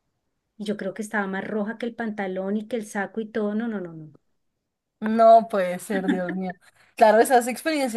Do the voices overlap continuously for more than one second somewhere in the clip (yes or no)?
no